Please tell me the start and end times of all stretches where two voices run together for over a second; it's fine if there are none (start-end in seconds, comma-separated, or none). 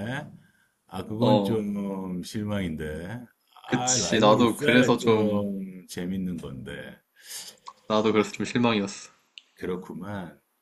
3.7-5.5